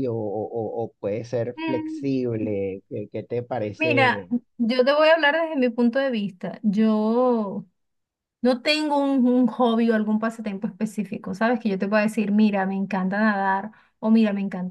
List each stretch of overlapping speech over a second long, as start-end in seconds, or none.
none